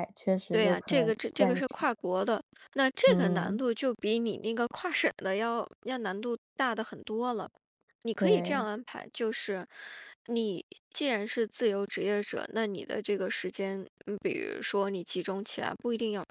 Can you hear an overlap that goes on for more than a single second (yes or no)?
yes